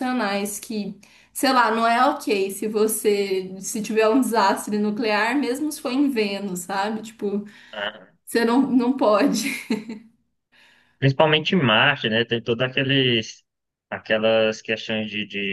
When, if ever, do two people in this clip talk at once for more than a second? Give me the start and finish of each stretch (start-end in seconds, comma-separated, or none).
none